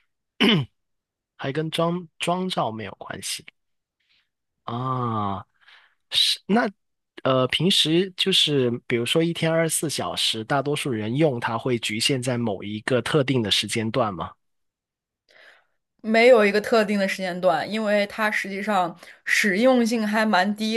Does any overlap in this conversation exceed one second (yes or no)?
no